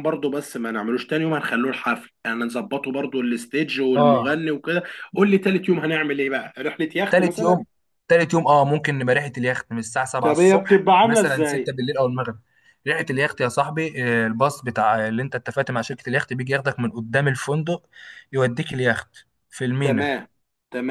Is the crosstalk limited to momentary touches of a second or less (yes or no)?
no